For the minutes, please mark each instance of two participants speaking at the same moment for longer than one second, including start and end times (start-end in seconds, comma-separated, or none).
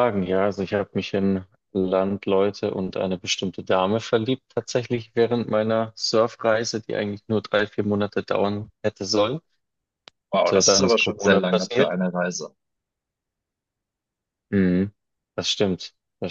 10.5-11.9